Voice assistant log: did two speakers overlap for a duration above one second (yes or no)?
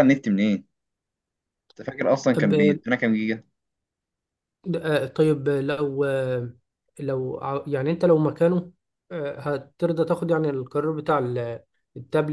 no